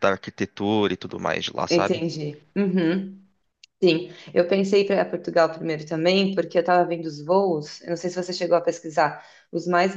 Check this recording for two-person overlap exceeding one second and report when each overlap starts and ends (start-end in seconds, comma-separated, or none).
none